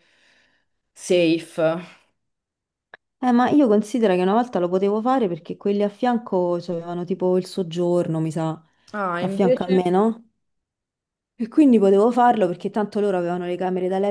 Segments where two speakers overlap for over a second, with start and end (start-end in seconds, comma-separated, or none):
none